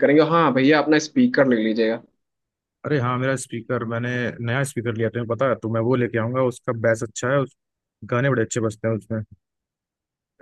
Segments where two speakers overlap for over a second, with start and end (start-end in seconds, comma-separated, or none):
none